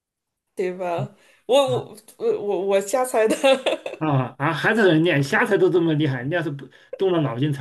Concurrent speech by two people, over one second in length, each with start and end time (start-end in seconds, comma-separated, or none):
none